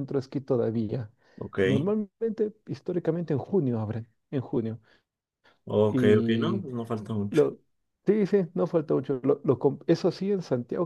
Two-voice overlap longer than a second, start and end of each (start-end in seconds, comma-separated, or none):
none